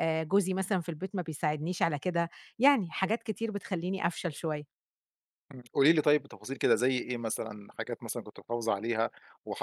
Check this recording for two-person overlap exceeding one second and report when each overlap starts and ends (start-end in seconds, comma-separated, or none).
none